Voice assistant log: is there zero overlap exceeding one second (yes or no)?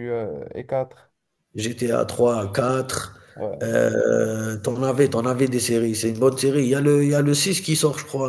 yes